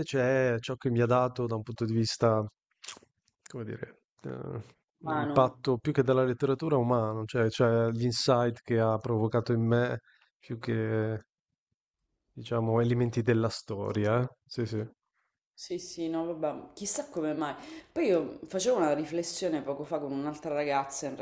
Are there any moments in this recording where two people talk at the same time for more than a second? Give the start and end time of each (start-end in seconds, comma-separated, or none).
none